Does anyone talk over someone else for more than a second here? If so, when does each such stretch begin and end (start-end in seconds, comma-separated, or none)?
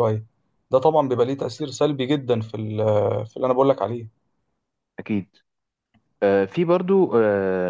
none